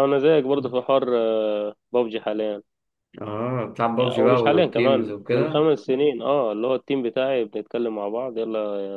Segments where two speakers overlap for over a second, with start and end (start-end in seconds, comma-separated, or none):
4.0-5.7